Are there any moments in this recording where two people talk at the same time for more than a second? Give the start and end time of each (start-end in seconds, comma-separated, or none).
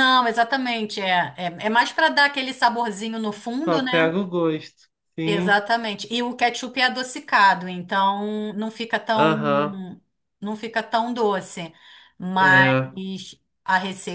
none